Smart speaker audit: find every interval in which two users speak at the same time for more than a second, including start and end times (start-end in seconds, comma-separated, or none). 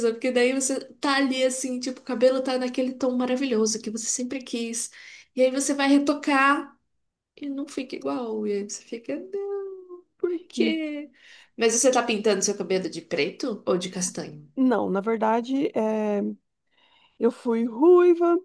none